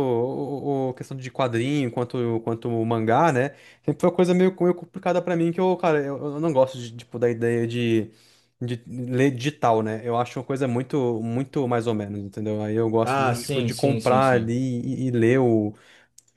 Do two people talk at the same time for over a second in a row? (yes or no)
yes